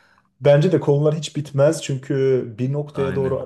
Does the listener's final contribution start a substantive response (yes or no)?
no